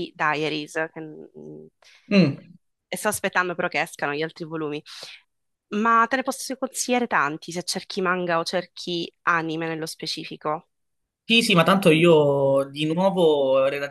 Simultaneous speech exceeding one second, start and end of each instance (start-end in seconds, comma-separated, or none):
none